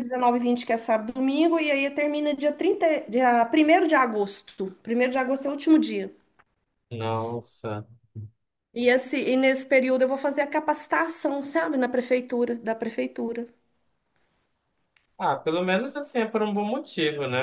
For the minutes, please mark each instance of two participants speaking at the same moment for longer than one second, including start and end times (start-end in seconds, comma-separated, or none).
none